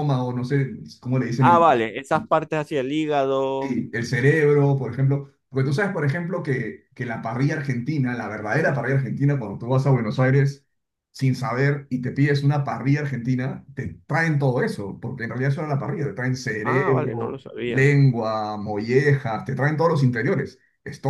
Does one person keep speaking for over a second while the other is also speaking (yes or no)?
yes